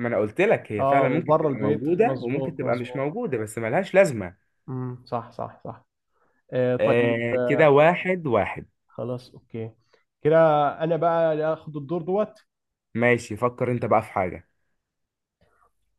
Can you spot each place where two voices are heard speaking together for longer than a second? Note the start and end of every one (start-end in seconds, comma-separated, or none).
0.8-3.0